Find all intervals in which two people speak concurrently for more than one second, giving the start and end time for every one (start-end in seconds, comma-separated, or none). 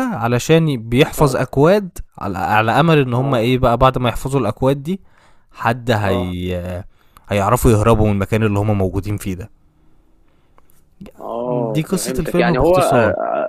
11.4-12.8